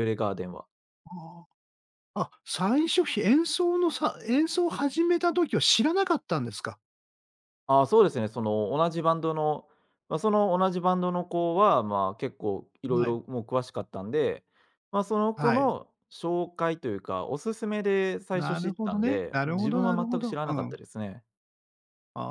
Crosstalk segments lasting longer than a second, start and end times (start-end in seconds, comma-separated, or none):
18.3-20.8